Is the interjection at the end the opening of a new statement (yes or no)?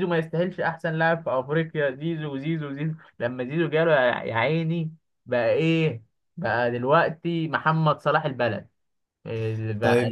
yes